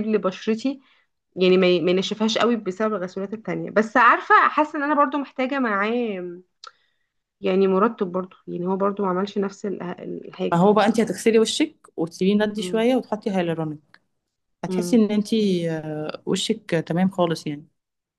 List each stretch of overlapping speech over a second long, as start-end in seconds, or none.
none